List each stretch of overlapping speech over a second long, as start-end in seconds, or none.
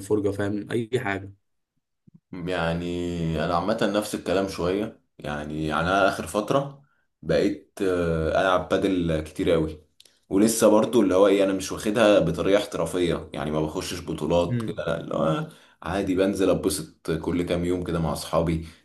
none